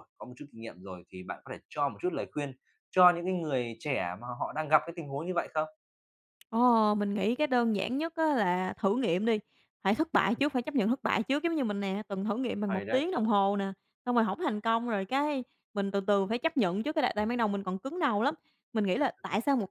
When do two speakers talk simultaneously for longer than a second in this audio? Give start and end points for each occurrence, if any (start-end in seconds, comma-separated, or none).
none